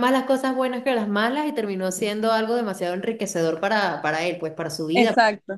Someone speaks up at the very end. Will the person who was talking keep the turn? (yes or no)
no